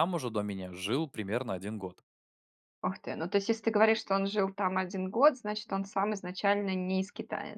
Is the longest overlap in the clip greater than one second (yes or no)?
no